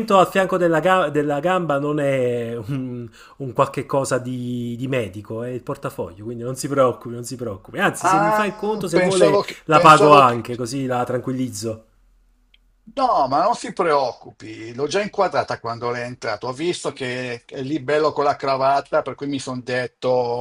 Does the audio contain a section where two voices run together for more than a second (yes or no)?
yes